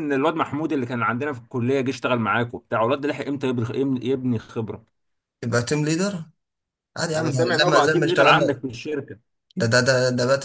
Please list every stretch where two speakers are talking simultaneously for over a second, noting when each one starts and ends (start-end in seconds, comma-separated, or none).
7.1-8.4